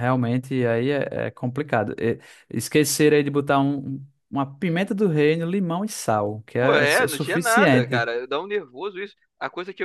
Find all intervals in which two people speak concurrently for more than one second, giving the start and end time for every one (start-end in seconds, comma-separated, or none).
6.6-8.1